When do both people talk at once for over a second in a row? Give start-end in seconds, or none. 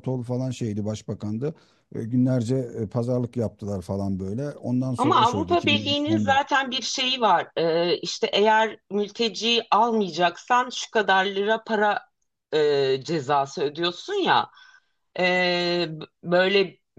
5.0-6.4